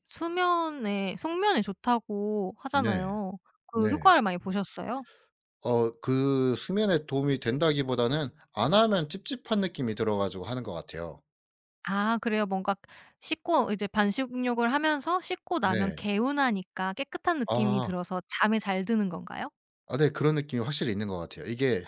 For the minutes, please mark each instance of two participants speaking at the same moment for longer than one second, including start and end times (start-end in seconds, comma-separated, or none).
none